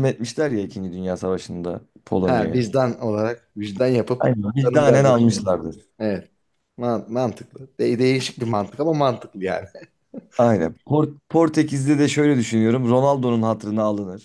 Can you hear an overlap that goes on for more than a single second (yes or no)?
yes